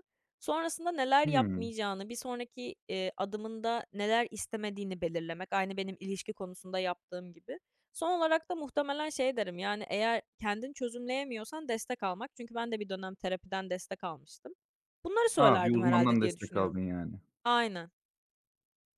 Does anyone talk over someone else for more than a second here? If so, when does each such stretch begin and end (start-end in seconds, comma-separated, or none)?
15.4-16.8